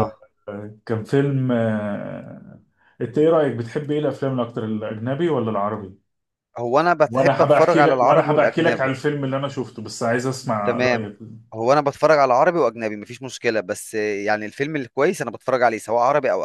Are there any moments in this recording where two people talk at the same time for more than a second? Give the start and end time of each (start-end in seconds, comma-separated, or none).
7.1-8.9